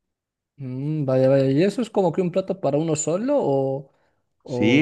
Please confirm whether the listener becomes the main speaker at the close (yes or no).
yes